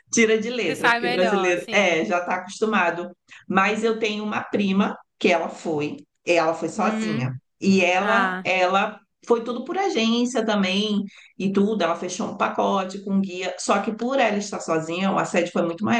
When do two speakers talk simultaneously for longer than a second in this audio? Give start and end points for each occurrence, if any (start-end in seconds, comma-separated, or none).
0.7-2.0